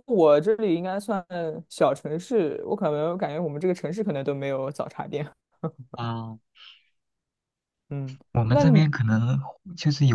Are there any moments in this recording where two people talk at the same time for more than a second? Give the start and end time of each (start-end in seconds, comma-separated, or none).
none